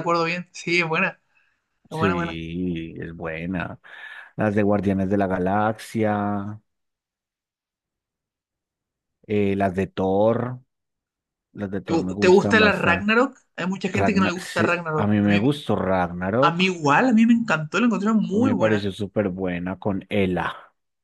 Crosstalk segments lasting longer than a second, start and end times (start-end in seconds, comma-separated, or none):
11.8-13.1, 13.9-15.5